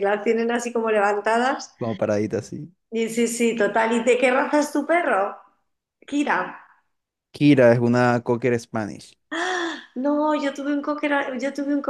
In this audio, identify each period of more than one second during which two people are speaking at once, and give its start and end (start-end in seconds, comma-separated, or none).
none